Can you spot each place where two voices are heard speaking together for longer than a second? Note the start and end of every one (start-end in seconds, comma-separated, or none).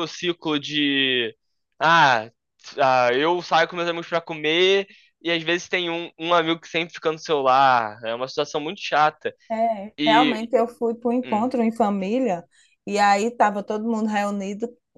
none